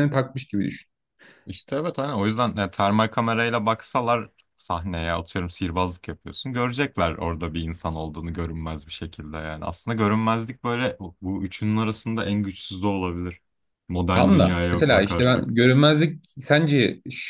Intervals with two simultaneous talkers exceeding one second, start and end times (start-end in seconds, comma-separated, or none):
14.1-15.6